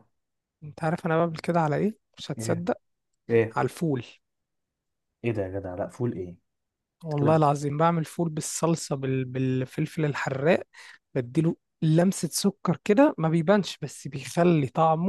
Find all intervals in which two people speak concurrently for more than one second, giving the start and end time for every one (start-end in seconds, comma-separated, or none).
none